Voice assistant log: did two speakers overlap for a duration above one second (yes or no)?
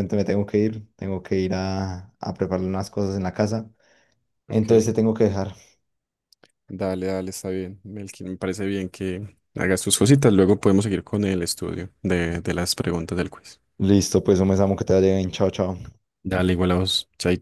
no